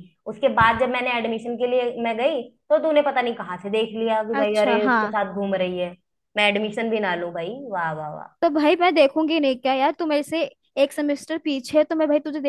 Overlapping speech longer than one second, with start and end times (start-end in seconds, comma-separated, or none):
none